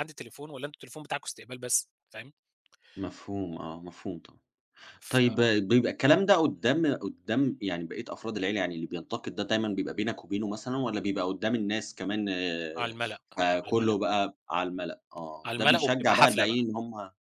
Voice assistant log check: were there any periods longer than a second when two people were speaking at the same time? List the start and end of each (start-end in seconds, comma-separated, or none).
15.4-16.7